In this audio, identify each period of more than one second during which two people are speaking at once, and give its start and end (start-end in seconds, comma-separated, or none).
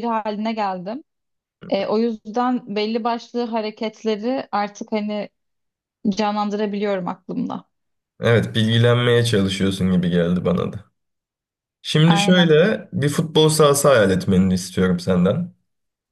none